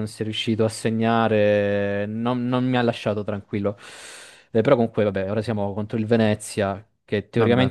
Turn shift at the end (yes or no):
no